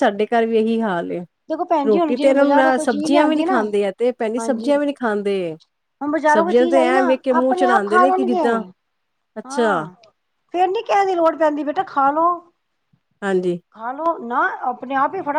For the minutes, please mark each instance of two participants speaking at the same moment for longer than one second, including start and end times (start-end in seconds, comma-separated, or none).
1.9-3.6, 6.3-8.6